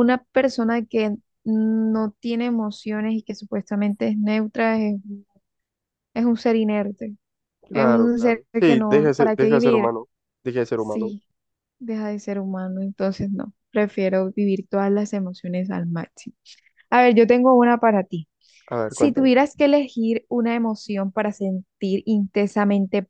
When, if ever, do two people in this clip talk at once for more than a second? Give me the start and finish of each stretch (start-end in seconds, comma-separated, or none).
7.7-9.9